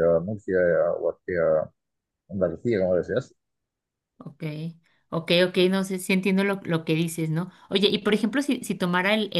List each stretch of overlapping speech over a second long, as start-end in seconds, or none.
none